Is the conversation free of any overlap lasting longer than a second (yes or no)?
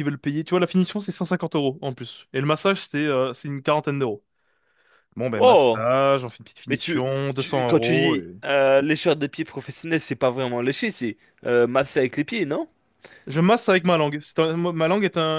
no